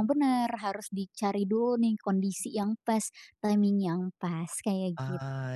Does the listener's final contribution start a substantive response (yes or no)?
yes